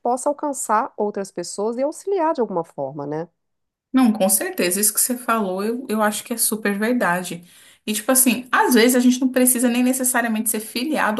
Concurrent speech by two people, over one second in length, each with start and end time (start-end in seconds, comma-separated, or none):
none